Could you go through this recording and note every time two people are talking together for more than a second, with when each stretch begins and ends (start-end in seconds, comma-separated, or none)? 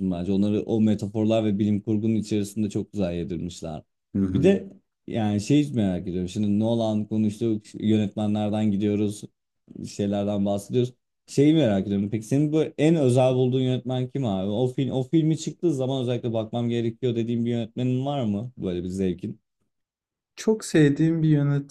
none